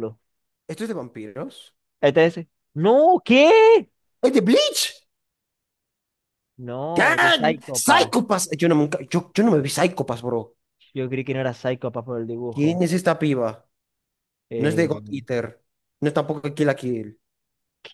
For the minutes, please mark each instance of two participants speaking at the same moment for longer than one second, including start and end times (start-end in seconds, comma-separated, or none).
6.9-8.1